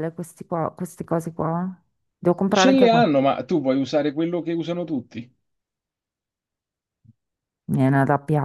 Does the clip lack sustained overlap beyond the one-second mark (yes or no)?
yes